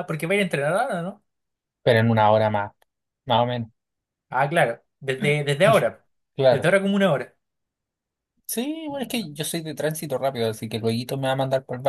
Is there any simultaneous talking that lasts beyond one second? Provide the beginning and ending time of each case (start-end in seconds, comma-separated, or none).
none